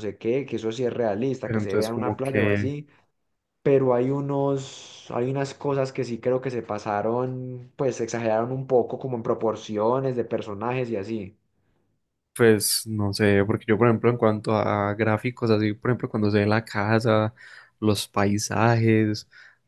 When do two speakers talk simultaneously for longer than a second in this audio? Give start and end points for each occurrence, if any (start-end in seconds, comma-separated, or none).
1.4-2.8